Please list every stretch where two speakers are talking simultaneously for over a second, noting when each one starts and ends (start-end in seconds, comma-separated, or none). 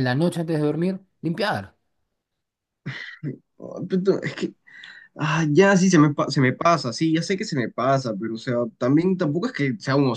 none